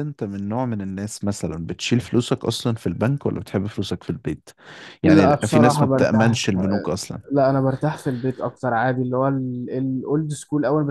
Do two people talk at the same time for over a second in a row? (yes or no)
yes